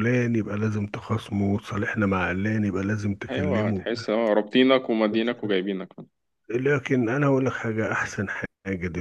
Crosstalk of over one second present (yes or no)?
no